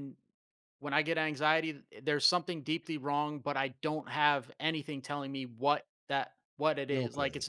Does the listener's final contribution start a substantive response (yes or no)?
no